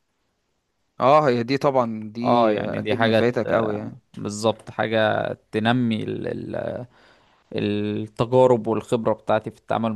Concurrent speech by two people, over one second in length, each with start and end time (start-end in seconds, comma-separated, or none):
2.2-3.7